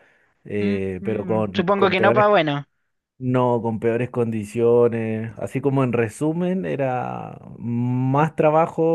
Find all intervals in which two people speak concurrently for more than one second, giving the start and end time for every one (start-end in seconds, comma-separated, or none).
0.6-2.3